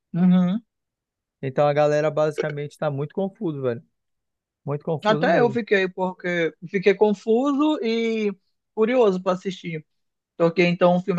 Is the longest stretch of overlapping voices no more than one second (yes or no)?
yes